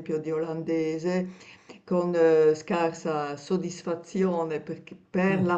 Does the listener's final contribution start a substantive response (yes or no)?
no